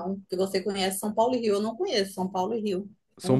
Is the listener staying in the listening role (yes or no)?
no